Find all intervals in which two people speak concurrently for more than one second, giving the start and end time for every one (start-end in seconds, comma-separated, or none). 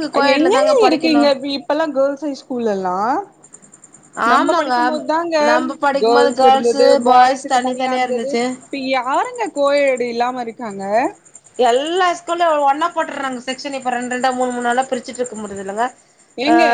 6.0-8.4